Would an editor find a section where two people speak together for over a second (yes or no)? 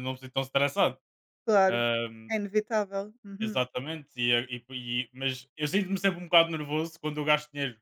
no